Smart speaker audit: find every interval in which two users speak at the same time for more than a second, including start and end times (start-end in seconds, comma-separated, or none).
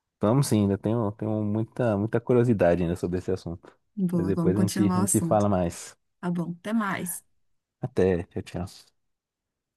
4.1-5.5